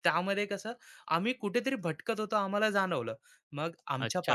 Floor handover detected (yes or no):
yes